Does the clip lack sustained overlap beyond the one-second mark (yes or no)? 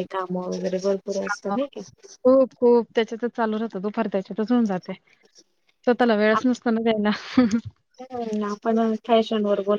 yes